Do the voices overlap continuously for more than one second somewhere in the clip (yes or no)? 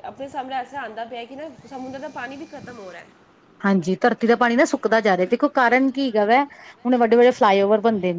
no